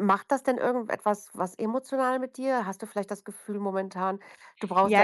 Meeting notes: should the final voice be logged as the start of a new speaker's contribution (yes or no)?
yes